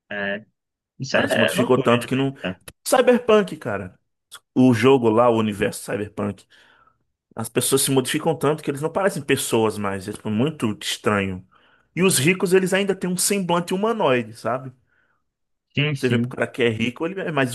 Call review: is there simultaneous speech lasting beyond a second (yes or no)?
yes